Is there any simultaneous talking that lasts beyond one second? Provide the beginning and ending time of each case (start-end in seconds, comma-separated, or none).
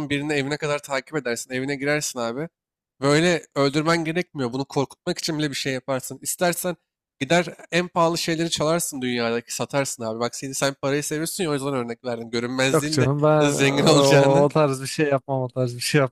12.7-14.5